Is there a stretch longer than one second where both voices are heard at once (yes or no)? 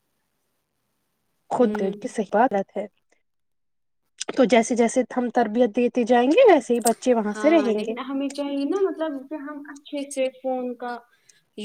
no